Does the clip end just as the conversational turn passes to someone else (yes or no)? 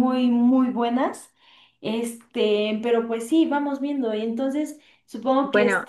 no